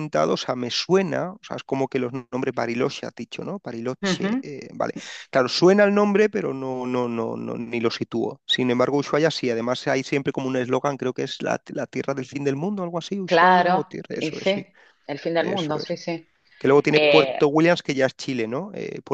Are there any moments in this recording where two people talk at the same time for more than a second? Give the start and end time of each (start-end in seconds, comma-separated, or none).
13.2-14.7